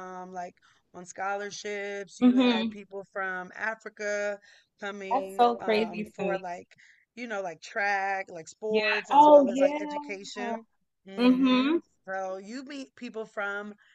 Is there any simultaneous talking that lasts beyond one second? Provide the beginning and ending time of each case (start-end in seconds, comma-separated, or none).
5.1-6.4, 8.7-10.1